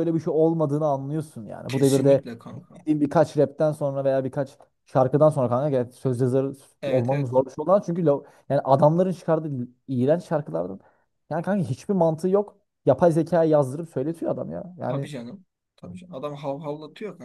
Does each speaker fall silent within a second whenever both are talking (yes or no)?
yes